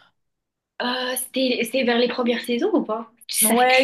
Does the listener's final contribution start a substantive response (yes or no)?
yes